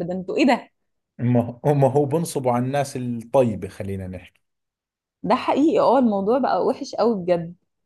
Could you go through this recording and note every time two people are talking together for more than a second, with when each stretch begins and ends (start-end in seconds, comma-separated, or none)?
none